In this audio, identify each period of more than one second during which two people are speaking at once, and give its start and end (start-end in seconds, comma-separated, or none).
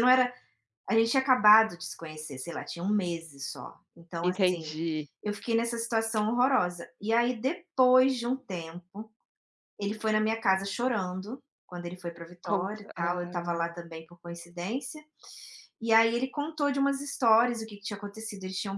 12.4-13.7